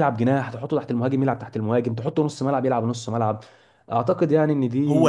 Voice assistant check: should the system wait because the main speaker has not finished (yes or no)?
no